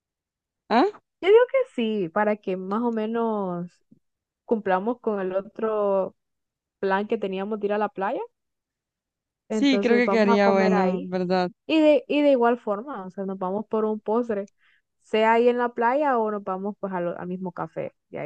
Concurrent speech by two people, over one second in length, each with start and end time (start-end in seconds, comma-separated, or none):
9.5-11.1